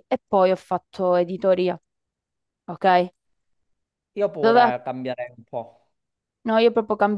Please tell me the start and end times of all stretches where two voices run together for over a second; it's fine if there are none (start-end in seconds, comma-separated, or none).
none